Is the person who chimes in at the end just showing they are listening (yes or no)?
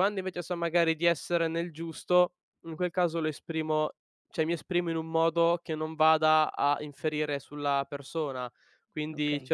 yes